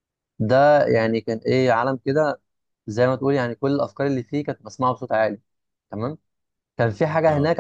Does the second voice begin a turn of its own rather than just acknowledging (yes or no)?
no